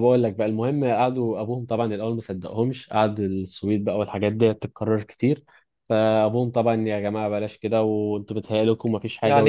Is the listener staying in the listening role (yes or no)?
no